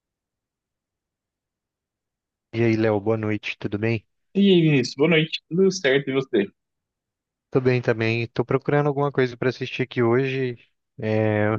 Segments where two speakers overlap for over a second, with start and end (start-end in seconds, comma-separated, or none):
none